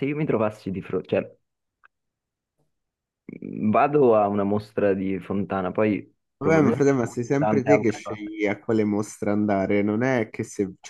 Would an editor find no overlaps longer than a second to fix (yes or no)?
no